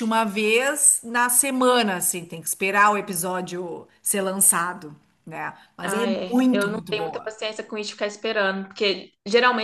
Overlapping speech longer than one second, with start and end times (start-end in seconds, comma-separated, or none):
5.8-7.3